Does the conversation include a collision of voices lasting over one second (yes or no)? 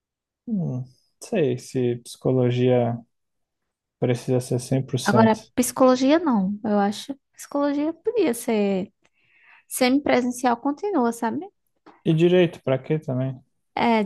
no